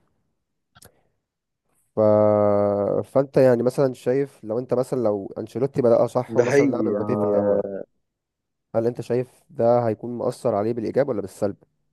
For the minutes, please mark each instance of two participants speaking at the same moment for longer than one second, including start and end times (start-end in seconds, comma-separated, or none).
6.3-7.6